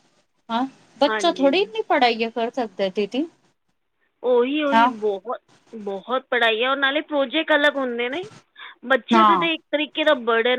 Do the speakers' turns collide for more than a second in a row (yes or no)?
no